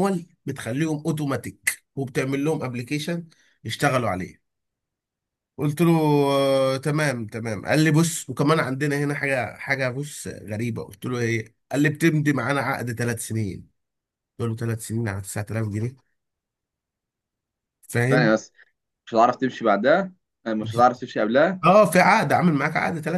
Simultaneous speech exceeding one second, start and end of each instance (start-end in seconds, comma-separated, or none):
none